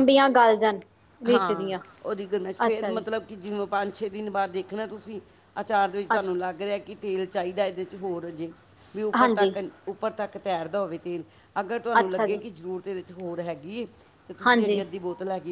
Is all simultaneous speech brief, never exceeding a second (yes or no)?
yes